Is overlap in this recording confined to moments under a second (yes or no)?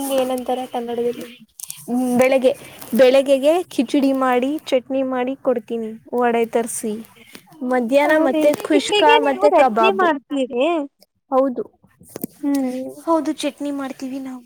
no